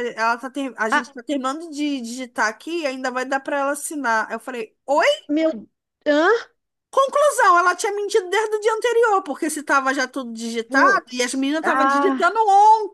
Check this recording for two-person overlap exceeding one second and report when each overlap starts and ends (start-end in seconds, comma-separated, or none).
10.7-12.4